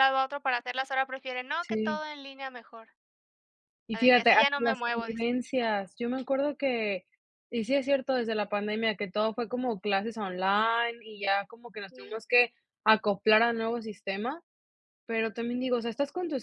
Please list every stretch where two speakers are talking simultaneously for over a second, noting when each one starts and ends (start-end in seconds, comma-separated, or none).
3.9-5.3